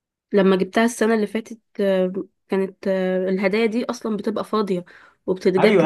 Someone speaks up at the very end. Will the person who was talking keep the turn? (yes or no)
no